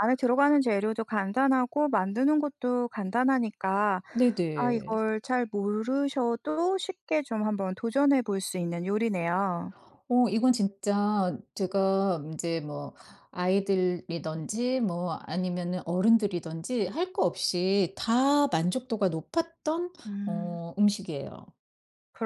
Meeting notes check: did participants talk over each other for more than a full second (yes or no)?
no